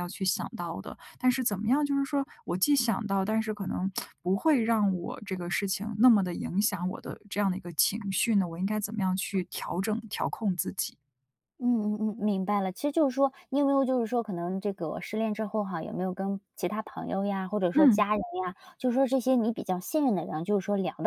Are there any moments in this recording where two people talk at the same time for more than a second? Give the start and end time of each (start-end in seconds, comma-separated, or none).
none